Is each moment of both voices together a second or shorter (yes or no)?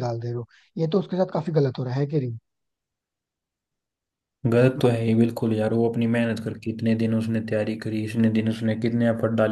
yes